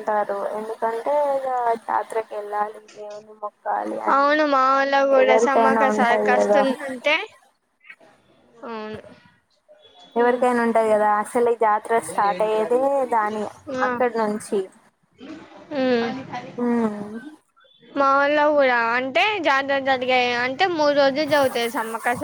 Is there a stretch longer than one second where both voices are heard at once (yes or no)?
yes